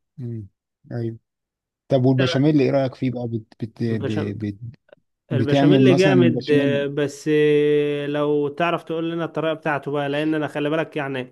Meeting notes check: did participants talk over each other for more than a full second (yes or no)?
yes